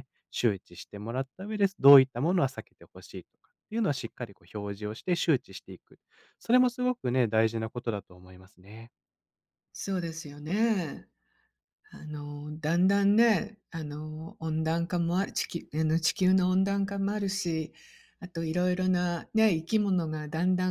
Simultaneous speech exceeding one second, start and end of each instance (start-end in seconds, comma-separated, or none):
none